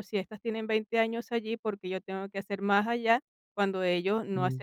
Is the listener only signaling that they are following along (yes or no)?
yes